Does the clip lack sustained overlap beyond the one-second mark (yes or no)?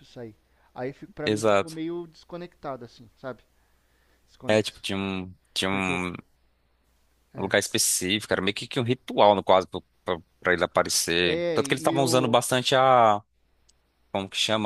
no